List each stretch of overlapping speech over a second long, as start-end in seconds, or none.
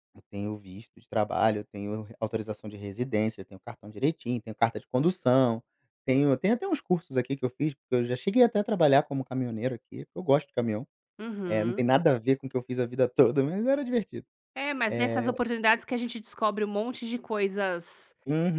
none